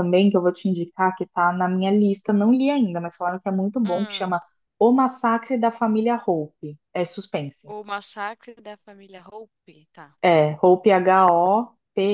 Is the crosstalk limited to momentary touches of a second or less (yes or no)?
yes